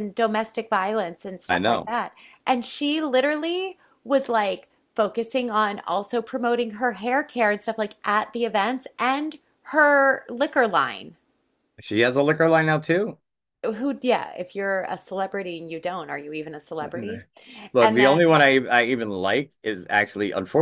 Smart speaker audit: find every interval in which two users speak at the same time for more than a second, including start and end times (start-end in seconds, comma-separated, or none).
none